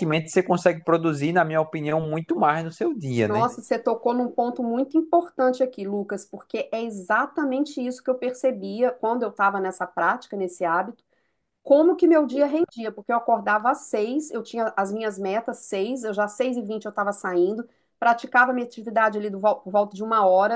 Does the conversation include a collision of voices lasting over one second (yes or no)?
no